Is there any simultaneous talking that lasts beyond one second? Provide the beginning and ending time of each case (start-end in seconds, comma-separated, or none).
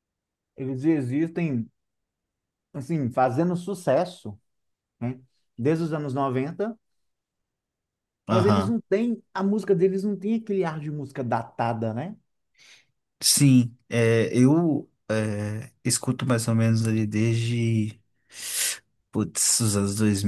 none